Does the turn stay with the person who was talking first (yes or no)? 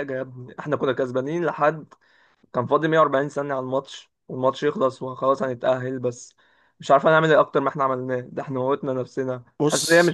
yes